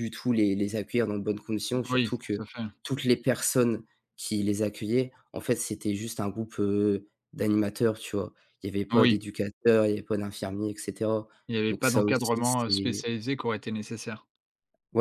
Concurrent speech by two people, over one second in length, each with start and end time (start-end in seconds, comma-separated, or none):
11.7-13.1